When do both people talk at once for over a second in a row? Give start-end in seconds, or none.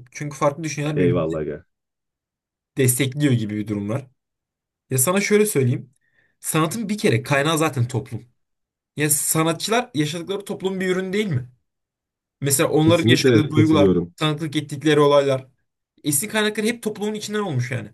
12.8-14.1